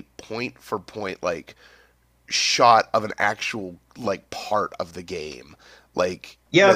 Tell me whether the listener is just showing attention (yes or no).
no